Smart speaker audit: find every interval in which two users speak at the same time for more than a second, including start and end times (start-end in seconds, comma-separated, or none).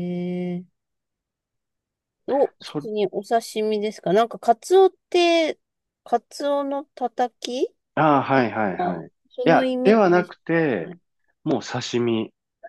8.8-10.9